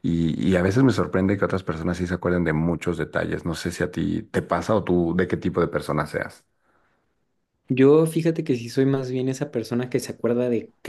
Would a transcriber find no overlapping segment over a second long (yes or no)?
yes